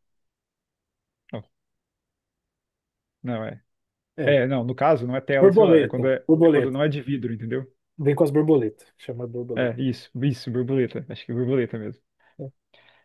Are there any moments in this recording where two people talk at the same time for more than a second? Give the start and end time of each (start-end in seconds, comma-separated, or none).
5.4-6.8